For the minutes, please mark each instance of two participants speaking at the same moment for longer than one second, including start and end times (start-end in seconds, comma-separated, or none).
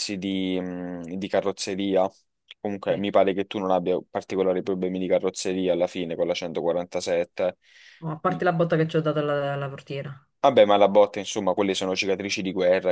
none